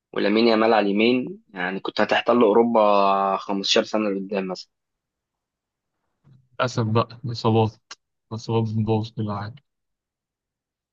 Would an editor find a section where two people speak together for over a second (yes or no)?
no